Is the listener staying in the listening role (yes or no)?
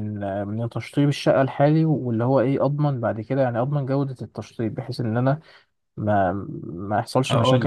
yes